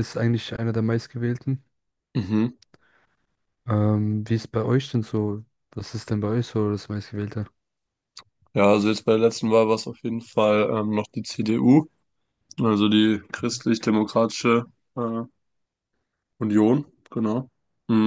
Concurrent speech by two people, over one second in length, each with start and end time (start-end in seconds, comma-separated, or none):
none